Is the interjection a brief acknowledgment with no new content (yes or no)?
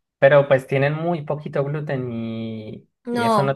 no